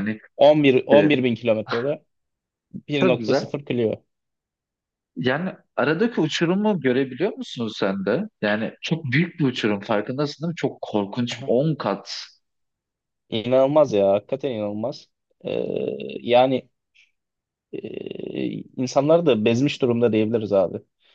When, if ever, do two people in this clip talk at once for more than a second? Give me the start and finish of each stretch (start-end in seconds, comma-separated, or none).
none